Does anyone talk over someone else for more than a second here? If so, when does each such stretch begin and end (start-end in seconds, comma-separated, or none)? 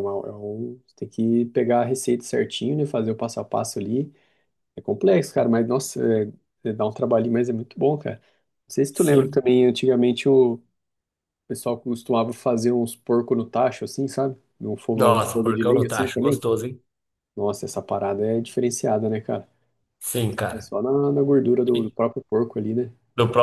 14.9-16.4